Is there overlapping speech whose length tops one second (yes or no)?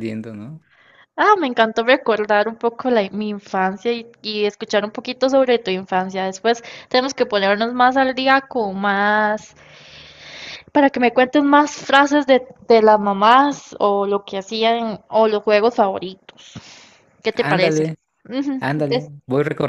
no